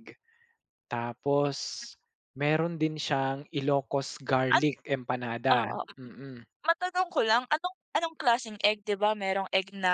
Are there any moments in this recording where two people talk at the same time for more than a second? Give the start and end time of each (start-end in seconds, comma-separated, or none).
none